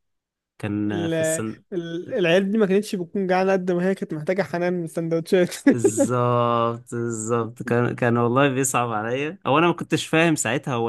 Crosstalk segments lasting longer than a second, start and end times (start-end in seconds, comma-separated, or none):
none